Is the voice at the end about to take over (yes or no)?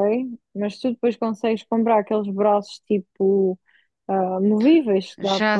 yes